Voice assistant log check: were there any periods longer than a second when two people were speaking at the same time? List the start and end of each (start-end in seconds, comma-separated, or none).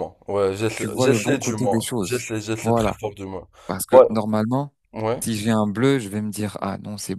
0.7-3.0